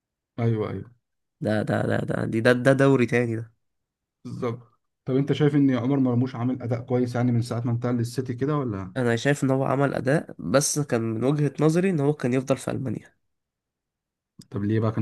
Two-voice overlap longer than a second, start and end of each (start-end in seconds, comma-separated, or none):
none